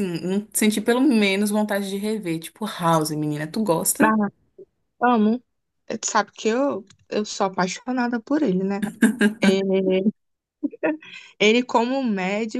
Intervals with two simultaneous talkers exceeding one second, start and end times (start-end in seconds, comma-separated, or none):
none